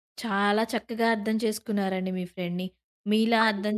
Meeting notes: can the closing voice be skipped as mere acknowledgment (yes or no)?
yes